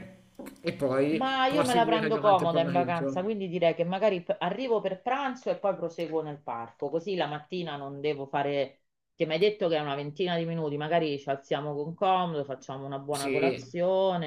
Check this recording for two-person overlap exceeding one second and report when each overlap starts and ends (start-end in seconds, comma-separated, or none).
1.1-3.2